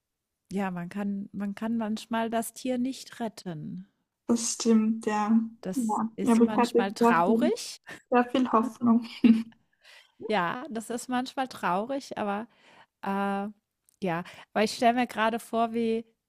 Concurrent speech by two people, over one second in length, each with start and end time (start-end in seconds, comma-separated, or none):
5.7-7.5